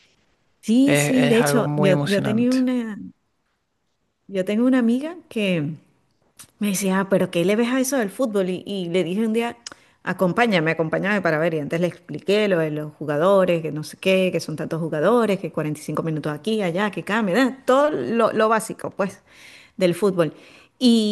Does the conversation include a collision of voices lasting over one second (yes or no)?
yes